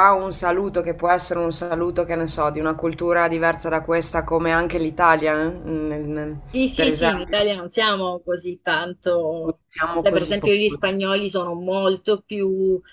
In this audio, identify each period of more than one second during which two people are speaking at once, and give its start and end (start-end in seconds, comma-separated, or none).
9.4-10.9